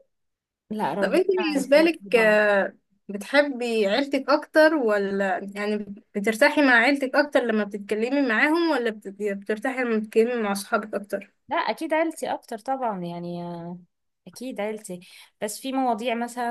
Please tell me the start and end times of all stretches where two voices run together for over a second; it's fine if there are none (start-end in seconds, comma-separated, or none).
1.0-2.4